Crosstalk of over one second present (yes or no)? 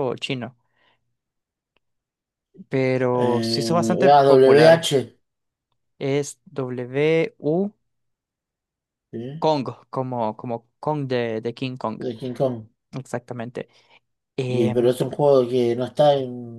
yes